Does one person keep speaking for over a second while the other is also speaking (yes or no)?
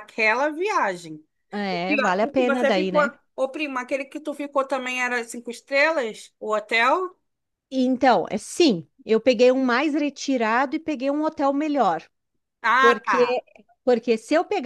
yes